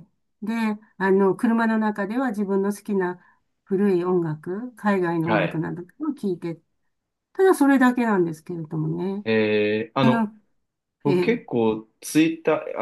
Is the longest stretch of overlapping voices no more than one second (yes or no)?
yes